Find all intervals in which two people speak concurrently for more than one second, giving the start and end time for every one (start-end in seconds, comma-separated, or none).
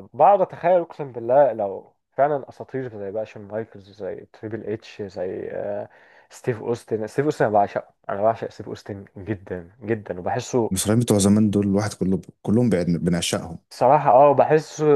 none